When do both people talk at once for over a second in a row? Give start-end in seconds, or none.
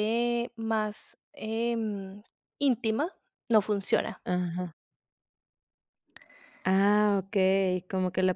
none